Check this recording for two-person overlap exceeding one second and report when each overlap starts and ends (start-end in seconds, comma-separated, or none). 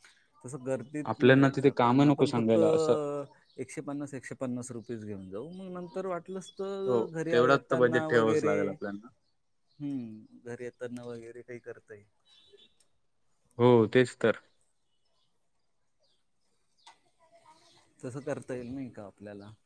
1.1-2.9, 6.9-9.1